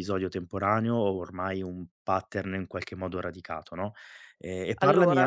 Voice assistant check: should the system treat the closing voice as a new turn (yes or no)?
no